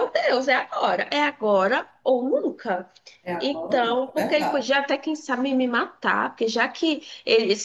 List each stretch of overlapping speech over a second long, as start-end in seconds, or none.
3.4-4.8